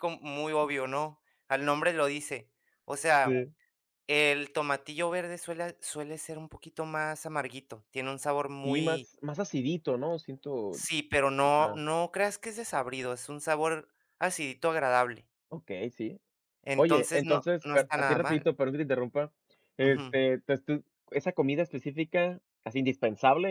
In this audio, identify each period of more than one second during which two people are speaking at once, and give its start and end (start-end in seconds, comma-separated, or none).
16.7-18.5